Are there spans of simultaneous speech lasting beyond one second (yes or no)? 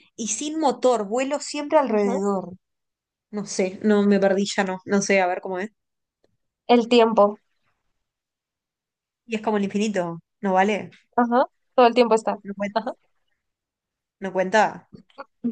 no